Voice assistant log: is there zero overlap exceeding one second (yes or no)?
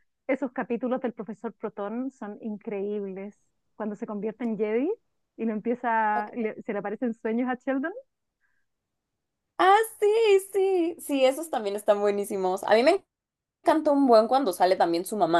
yes